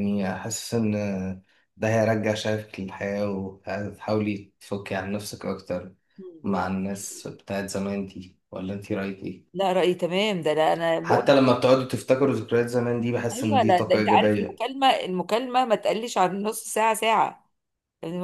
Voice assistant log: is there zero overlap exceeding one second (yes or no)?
no